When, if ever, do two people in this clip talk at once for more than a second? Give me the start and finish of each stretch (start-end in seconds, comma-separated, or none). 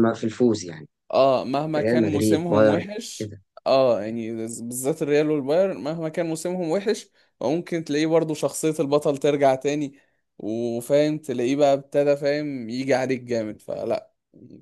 1.8-3.4